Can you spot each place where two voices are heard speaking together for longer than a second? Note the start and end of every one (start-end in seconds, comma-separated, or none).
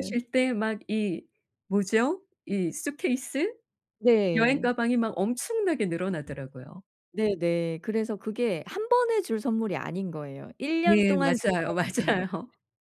10.8-12.2